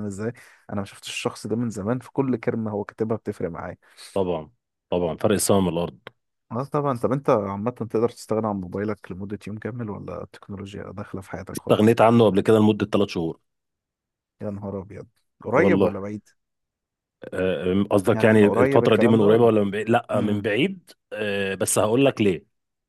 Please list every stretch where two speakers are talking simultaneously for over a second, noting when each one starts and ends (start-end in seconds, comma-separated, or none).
18.1-19.5